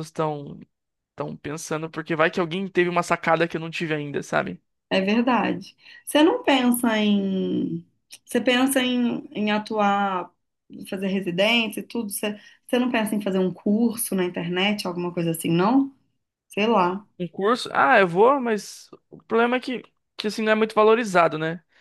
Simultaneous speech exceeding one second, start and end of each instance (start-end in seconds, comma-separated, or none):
none